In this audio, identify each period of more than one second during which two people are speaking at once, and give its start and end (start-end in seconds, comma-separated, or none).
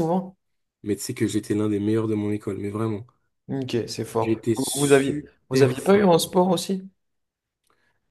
4.2-6.1